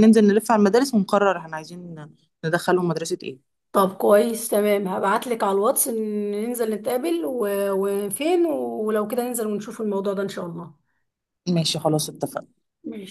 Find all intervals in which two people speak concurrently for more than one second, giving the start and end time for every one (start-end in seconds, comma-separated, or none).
none